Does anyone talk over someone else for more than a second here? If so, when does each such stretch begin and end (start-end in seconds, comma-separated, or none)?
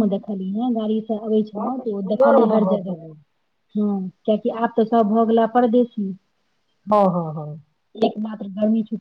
1.6-3.0